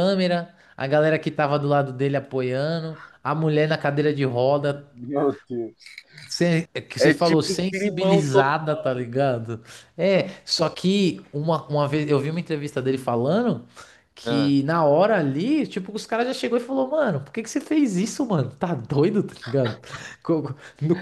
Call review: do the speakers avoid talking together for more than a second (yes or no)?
no